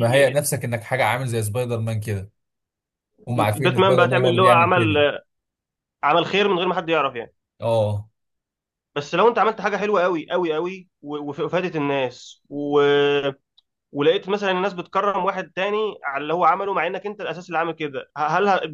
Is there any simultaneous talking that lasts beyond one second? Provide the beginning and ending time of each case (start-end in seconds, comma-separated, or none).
3.3-4.8